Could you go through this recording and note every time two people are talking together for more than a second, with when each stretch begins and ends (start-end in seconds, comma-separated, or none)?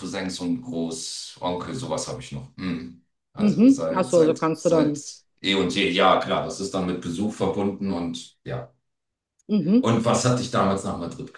3.4-5.0